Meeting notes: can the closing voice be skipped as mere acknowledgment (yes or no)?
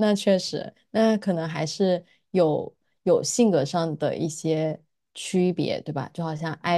no